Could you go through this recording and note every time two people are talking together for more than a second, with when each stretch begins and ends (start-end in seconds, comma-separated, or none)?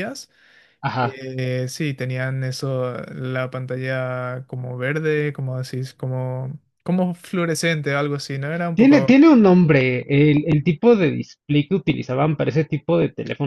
none